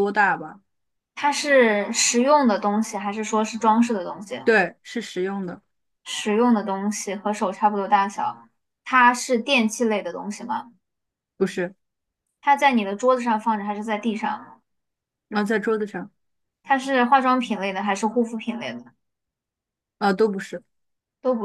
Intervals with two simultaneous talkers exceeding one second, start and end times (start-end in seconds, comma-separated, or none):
none